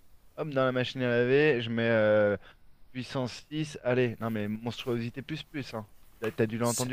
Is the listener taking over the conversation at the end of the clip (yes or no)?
no